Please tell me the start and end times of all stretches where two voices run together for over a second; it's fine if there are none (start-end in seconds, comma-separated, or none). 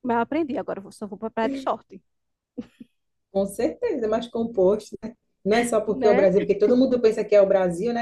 none